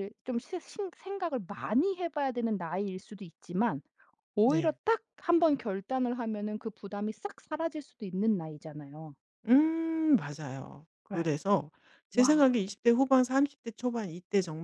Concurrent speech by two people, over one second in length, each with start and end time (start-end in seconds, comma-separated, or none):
none